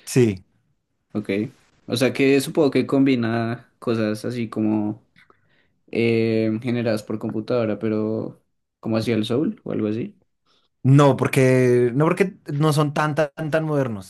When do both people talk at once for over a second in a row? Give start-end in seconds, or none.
none